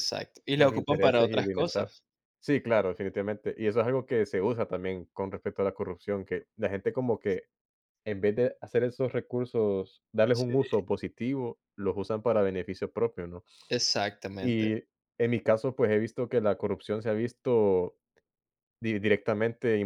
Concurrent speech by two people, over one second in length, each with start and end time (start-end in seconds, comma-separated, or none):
0.6-1.9